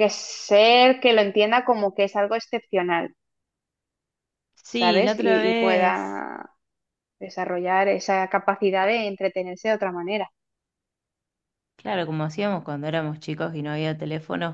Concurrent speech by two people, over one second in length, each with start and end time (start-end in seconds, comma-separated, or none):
4.7-6.2